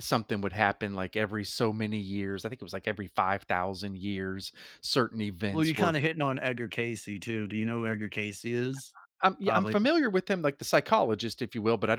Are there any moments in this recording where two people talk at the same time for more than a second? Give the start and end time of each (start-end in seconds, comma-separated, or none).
none